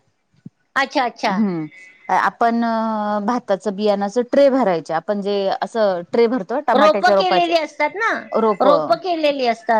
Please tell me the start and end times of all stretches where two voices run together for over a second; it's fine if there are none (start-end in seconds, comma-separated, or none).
none